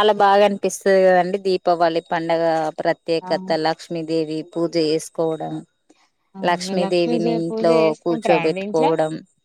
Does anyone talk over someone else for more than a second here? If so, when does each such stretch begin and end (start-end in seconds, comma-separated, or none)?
6.7-8.9